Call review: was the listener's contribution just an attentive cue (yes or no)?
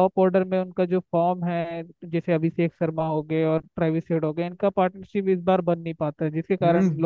no